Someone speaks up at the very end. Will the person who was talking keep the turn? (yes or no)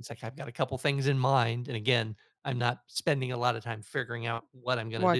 no